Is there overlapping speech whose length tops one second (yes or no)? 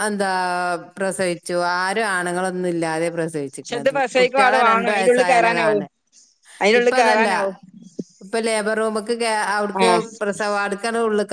yes